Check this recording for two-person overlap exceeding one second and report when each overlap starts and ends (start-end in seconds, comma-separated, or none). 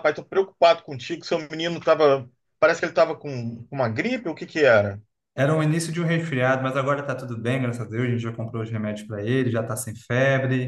none